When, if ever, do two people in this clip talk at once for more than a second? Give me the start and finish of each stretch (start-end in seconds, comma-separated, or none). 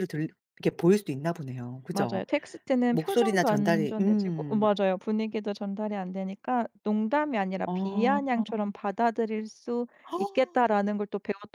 2.9-4.7